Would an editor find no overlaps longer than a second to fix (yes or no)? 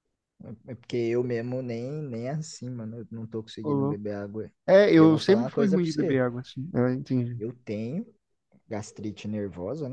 no